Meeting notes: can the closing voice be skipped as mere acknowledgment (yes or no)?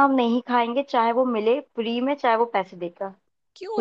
no